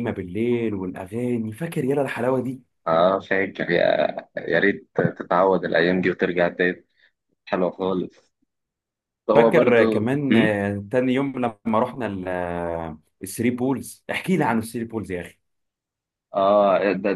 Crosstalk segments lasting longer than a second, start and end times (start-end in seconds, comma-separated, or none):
9.3-10.6